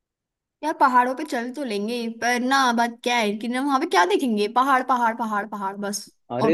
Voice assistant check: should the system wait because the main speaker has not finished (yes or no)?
no